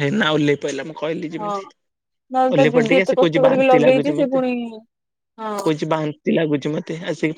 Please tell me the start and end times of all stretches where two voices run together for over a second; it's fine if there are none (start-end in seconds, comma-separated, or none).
2.5-4.4